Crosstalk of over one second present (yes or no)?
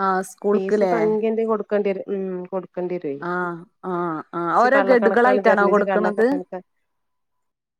yes